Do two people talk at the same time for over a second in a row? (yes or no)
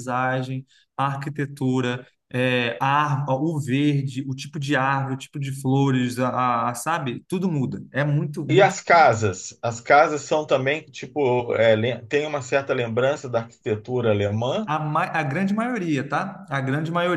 no